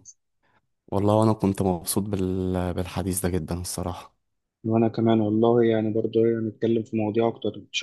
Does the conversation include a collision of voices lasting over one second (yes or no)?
no